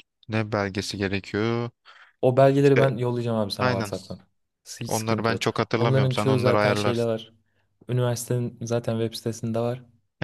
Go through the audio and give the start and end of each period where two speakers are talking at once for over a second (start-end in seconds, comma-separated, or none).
4.9-7.1